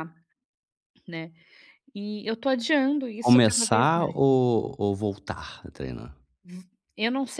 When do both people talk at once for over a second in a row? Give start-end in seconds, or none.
3.2-4.4